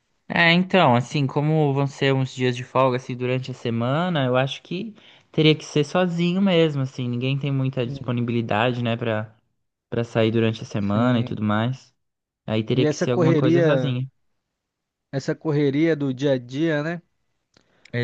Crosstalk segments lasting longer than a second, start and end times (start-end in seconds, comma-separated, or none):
12.7-14.0